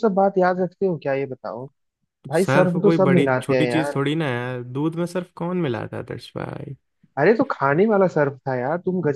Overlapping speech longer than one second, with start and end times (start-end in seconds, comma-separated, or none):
2.4-4.0